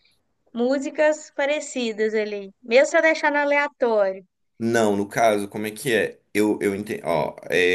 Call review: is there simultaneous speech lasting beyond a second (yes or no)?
no